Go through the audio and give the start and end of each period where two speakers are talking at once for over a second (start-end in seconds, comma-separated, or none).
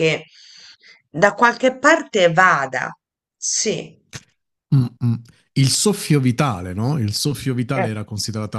none